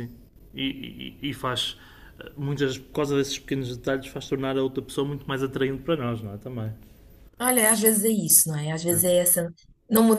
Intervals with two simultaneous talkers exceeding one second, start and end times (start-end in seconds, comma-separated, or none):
none